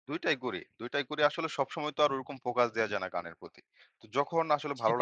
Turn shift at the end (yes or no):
no